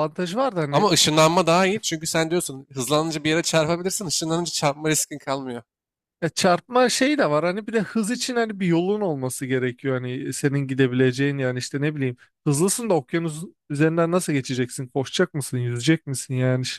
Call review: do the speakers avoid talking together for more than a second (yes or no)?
yes